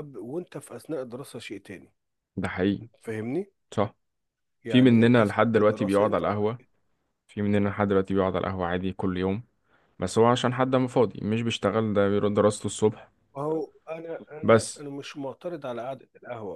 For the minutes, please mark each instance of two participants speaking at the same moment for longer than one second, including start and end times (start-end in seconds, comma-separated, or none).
4.7-6.2